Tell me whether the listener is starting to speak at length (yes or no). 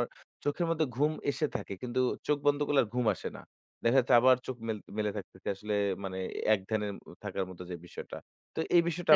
no